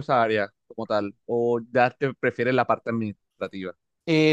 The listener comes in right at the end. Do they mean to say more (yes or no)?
yes